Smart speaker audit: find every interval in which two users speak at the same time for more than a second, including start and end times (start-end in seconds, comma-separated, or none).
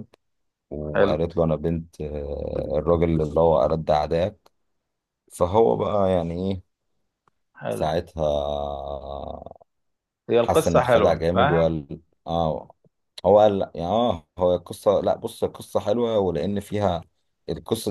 10.4-11.8